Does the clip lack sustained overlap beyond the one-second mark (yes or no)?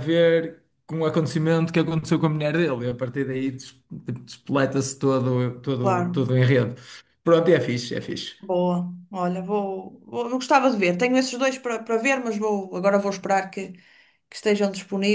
yes